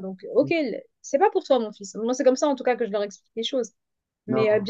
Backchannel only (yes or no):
yes